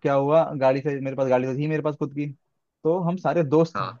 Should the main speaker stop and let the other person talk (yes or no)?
no